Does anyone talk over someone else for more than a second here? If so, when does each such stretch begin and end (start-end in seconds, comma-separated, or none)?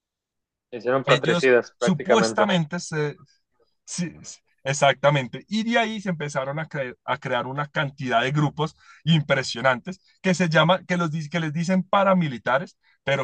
1.1-2.5